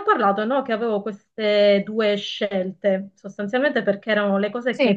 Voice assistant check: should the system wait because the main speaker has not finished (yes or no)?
yes